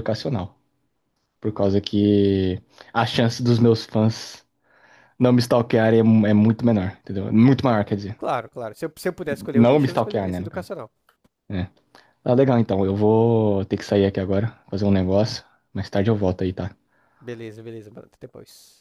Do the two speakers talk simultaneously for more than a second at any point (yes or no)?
yes